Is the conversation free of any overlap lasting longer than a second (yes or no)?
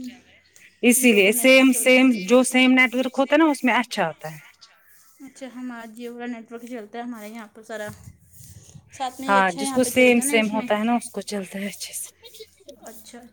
no